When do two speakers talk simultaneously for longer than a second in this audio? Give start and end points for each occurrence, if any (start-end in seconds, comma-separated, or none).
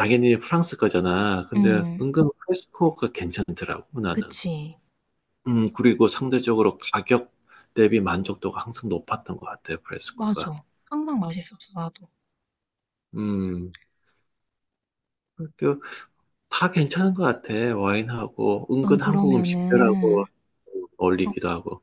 18.8-20.2